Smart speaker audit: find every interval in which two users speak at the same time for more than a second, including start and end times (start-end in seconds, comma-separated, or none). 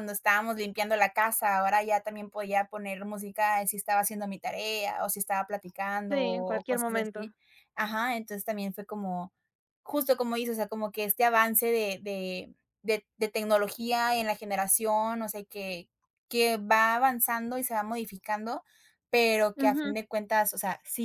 6.1-7.3